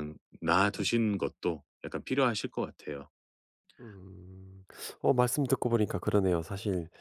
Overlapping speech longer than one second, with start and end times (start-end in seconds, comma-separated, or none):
none